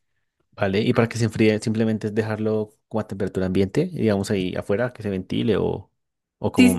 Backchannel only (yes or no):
no